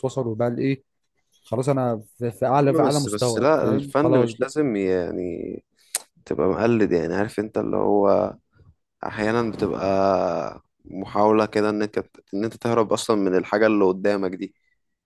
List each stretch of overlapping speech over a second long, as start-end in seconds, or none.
2.6-4.5